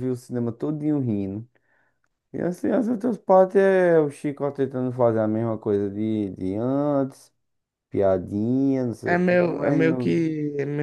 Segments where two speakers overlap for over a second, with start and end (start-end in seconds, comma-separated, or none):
9.1-10.3